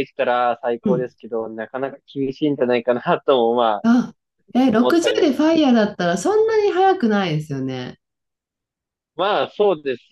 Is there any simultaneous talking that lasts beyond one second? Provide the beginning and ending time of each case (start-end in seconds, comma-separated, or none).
none